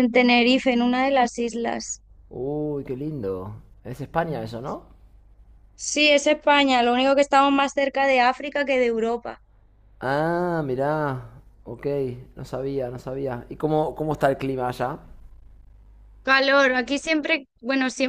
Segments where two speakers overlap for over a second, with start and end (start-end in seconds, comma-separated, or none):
none